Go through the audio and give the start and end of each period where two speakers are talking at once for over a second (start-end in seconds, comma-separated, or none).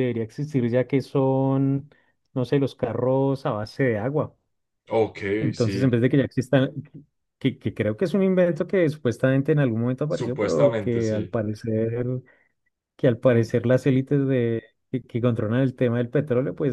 10.1-11.3